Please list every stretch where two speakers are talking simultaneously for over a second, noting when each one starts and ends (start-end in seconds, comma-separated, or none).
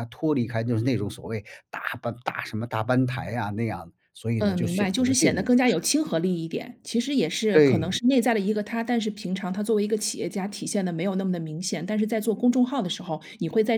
4.4-5.9